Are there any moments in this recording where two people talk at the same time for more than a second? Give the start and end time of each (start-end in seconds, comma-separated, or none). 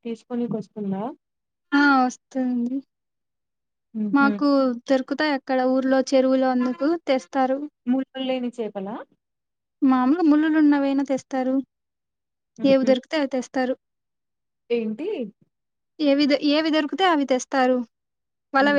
none